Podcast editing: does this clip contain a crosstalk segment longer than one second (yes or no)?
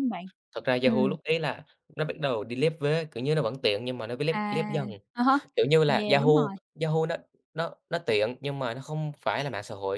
no